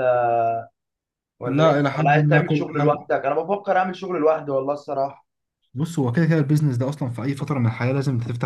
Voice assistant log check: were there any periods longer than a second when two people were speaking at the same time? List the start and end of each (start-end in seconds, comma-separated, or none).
1.5-3.0